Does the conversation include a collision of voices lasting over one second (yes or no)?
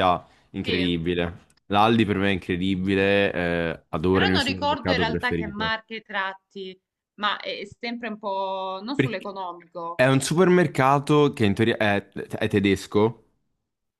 yes